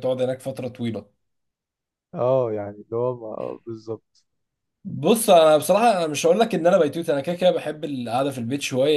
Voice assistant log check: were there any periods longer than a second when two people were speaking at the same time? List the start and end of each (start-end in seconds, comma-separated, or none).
none